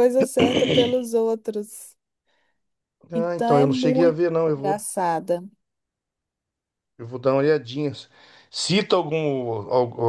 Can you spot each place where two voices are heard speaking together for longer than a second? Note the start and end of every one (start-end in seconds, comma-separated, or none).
3.1-4.8